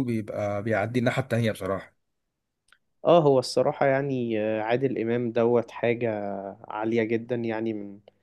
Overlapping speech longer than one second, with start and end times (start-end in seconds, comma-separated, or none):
none